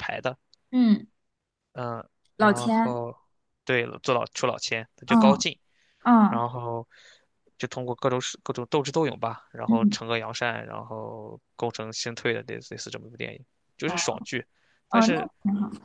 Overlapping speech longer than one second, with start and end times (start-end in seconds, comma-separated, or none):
none